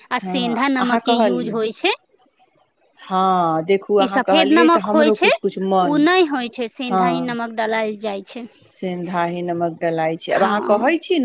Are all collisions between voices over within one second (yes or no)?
no